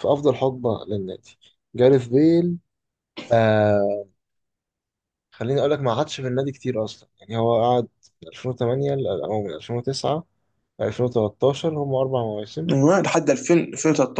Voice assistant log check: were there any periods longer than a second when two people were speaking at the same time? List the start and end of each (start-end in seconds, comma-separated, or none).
none